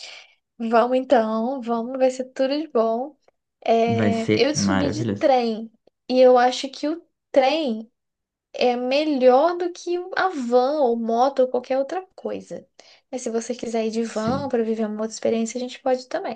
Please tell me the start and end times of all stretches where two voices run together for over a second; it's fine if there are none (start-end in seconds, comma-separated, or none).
3.9-5.3